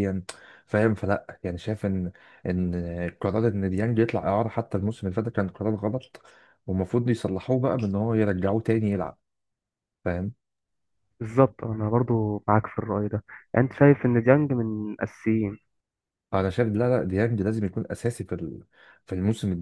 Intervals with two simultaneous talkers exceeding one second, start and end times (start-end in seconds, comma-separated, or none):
none